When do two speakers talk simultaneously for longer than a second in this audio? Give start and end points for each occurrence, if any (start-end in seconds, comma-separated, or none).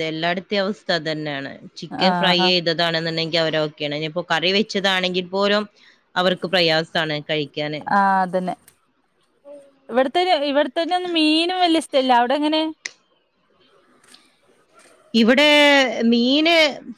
none